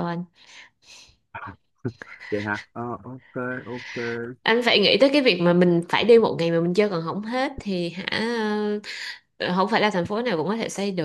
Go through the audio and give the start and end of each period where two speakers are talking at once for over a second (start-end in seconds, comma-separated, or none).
none